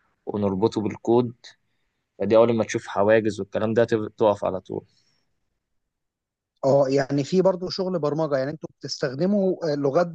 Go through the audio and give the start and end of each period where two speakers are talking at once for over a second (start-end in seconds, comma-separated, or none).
none